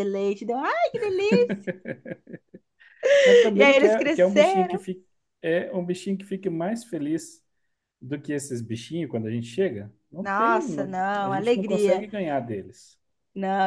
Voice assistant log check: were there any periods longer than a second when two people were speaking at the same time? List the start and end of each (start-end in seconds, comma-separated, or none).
3.5-4.8, 10.2-12.1